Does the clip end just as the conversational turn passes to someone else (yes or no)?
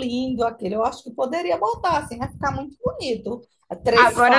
yes